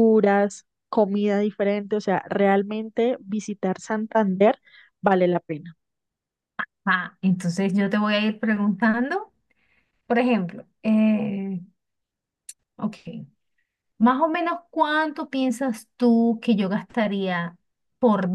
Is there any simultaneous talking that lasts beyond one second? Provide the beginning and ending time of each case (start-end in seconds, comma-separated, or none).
none